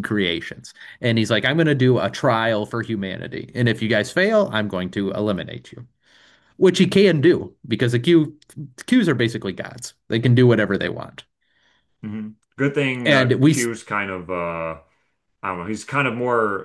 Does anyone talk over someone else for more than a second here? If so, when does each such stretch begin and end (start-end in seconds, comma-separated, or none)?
none